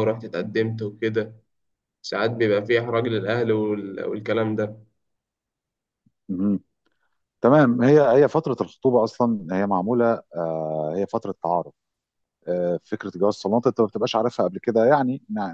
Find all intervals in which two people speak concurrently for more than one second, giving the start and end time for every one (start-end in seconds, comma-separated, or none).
none